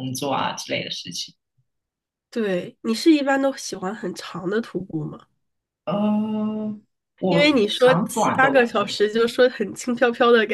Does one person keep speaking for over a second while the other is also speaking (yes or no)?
yes